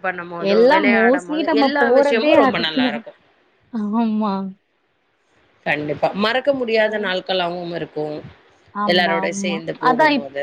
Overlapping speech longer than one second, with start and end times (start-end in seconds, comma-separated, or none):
0.5-3.0